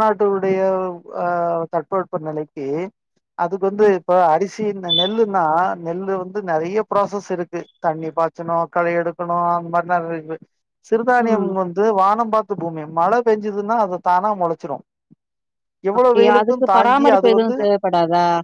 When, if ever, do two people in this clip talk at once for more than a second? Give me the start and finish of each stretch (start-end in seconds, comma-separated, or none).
16.0-17.5